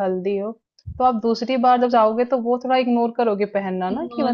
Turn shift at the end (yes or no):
yes